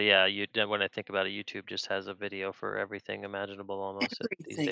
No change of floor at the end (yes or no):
no